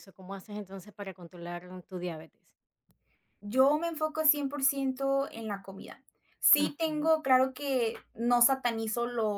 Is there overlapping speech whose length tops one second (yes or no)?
no